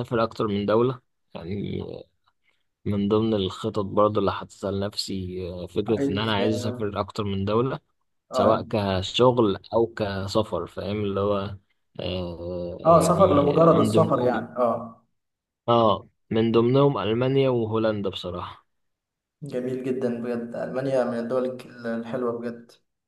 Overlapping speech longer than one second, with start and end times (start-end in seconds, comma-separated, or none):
12.8-14.3